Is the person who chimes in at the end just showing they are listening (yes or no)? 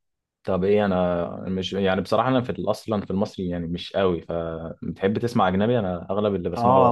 no